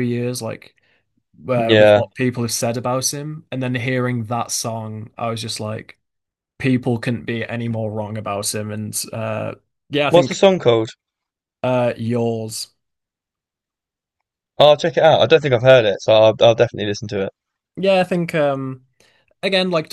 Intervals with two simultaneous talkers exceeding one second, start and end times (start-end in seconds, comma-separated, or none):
none